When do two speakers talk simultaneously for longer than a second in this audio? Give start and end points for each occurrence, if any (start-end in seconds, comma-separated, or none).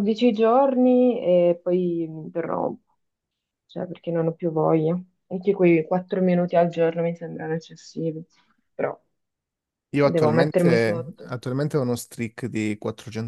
10.1-11.4